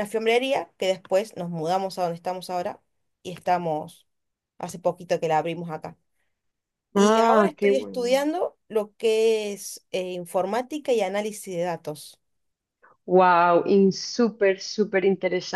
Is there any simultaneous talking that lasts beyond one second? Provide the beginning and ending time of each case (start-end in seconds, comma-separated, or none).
6.9-8.3